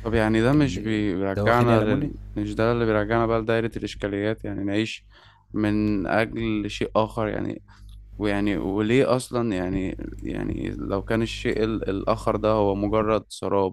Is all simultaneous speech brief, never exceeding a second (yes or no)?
no